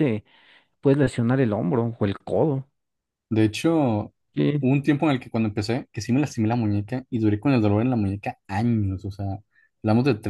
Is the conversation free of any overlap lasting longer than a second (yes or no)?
yes